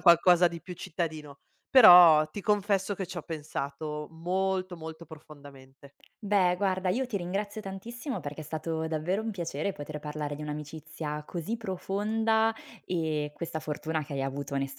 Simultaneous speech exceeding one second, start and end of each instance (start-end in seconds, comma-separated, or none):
none